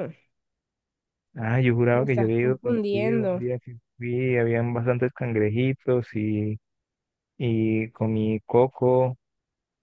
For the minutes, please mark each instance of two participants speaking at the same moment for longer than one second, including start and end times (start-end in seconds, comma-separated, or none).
1.9-3.5